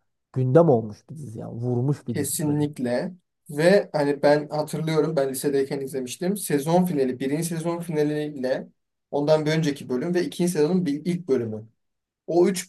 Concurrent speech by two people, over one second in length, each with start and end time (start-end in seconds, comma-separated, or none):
none